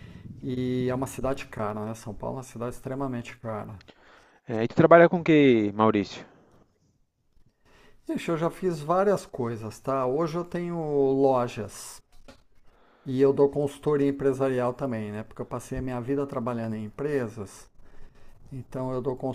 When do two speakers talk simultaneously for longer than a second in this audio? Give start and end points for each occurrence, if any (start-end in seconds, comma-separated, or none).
none